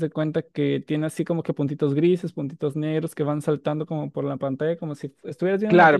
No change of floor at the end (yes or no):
no